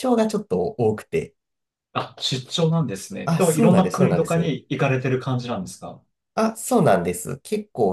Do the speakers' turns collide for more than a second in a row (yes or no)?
yes